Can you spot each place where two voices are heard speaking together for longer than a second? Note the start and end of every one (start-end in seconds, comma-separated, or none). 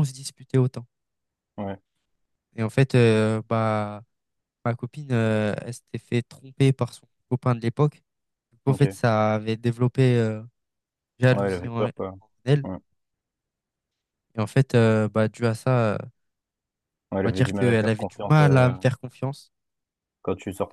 17.2-18.7